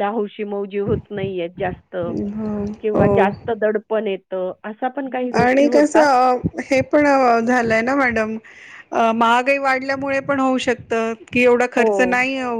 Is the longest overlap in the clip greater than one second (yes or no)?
no